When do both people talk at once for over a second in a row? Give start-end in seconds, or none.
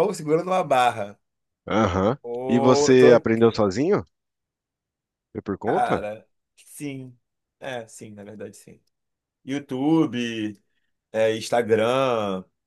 2.2-3.6